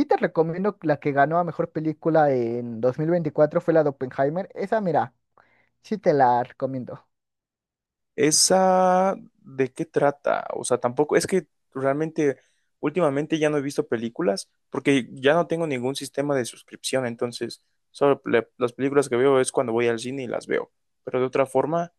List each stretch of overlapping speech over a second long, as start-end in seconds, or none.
none